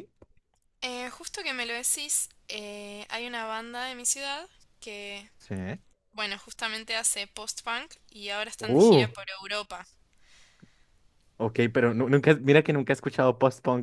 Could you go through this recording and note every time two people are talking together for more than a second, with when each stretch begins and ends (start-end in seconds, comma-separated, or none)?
none